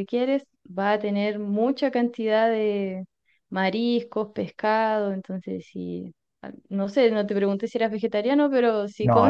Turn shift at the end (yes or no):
yes